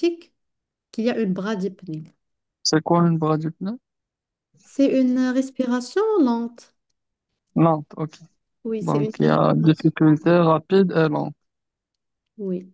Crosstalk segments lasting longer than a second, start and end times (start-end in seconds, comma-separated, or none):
8.8-10.1